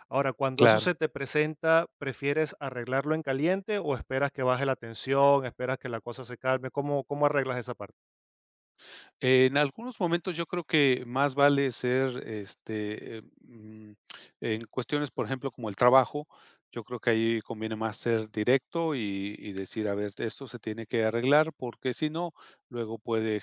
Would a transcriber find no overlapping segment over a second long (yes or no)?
yes